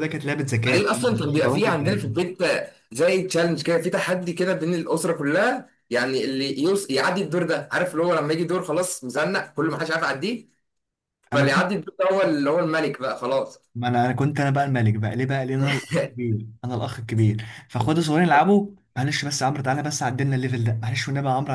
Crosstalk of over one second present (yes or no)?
yes